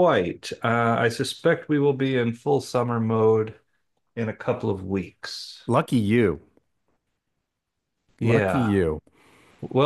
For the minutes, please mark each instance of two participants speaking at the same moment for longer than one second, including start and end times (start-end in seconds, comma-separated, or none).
none